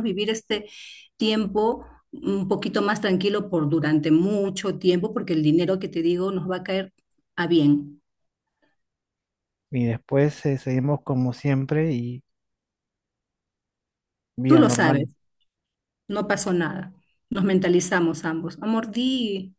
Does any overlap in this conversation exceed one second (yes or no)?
no